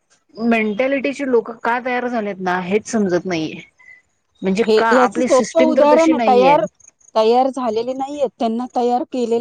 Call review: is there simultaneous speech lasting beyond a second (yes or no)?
yes